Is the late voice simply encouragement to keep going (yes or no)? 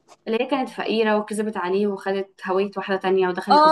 no